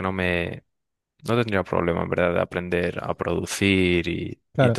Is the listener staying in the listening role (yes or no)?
no